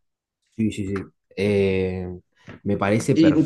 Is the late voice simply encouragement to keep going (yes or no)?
no